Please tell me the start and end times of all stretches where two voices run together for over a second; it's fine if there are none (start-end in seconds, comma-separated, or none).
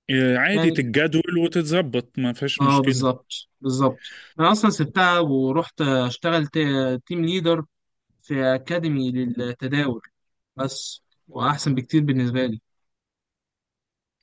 none